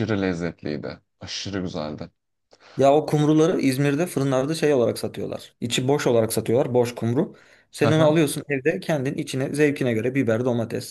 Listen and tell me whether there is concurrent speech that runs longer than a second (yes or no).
no